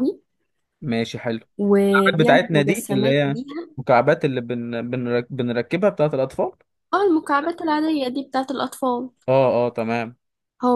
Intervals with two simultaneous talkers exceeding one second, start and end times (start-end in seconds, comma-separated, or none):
2.1-3.4